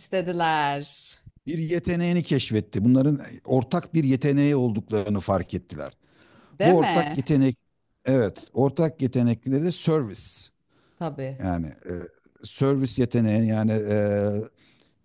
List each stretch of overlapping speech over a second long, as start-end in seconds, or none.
none